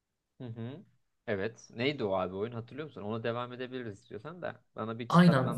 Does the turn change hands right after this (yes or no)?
yes